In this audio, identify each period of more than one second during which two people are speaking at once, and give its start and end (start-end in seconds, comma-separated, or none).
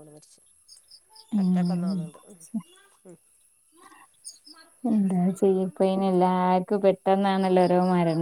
none